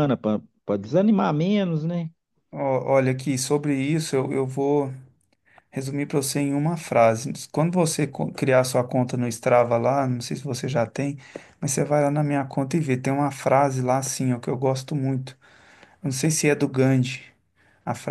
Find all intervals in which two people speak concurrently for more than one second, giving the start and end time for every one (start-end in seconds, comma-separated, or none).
none